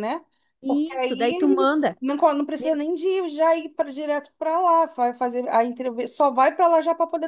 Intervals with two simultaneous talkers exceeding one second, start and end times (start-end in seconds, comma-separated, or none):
0.7-2.0